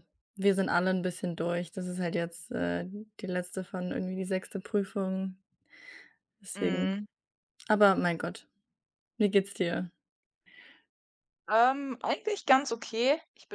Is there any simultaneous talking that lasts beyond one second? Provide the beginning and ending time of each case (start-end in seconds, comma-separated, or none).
none